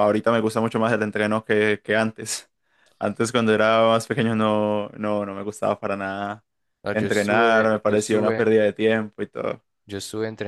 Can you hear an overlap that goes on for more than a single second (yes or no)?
yes